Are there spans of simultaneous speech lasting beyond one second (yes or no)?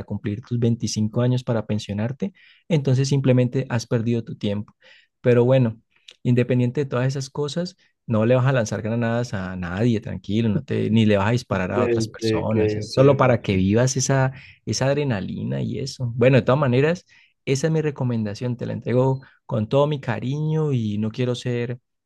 yes